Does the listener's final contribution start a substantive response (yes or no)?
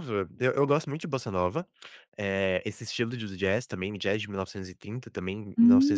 no